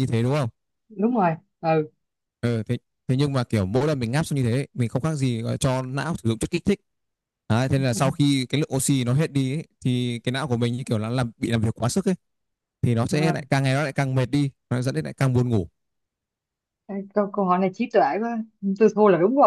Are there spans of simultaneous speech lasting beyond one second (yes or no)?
no